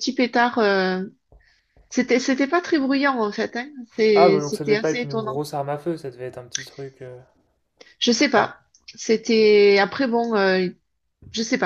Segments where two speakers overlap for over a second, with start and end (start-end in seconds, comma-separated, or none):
4.2-5.4